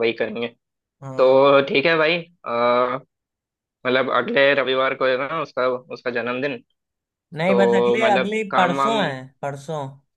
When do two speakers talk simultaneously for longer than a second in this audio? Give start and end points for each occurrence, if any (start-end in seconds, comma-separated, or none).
7.5-9.0